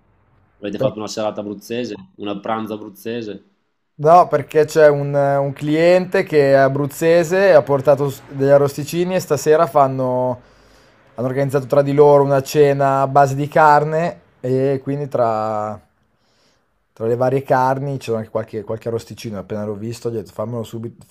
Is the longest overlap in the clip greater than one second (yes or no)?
no